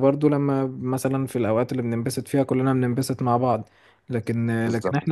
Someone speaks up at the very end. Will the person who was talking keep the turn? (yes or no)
yes